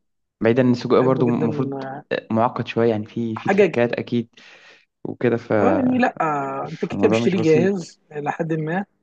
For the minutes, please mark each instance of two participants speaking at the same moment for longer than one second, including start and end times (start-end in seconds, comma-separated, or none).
6.7-7.9